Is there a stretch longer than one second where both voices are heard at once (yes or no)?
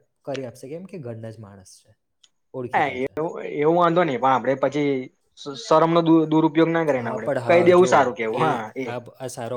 no